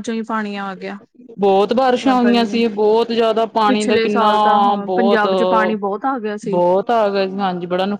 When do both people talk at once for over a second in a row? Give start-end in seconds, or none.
3.7-5.2